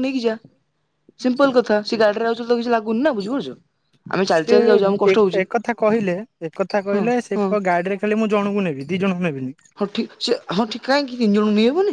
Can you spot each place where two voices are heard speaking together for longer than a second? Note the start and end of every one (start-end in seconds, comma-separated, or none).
none